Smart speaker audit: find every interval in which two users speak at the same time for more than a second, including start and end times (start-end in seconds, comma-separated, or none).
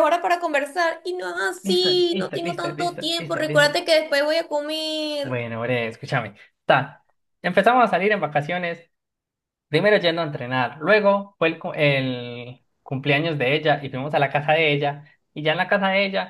1.7-3.7